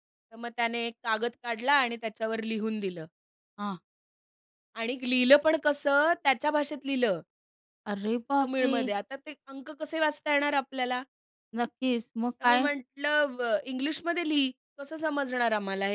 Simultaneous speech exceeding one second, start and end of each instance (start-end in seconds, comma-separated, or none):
none